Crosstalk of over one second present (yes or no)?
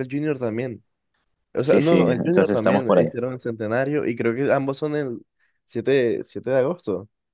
yes